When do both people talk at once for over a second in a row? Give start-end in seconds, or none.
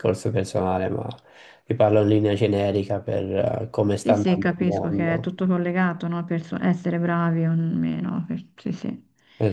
4.0-5.3